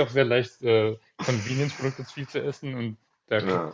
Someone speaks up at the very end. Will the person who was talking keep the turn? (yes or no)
yes